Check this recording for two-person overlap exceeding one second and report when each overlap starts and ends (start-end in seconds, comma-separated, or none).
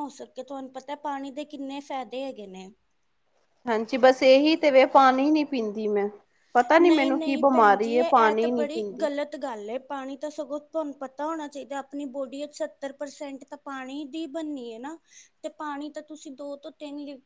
6.8-8.8